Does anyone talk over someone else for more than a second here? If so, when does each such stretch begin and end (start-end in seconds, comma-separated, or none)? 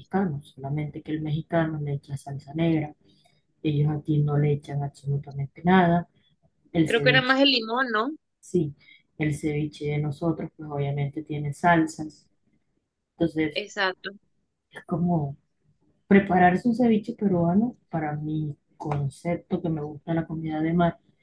none